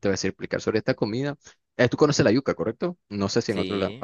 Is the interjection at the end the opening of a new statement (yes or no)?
yes